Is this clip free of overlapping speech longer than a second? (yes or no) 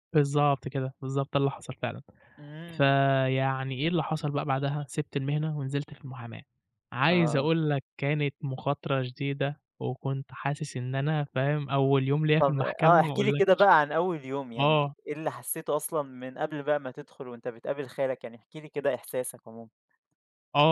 no